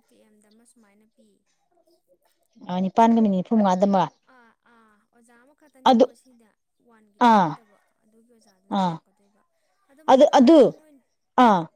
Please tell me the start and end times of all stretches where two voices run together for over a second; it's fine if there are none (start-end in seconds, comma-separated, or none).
none